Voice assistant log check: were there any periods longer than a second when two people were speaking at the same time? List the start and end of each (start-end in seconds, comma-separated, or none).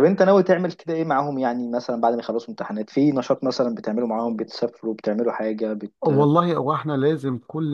none